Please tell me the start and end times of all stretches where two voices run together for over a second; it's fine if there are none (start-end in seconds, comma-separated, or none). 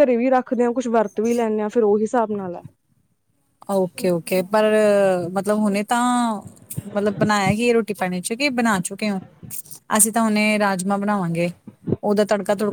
none